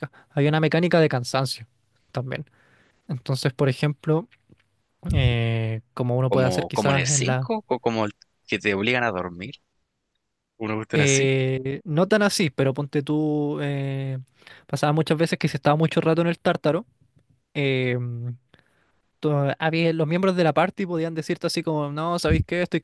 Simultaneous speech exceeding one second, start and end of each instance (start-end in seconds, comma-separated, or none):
6.3-7.5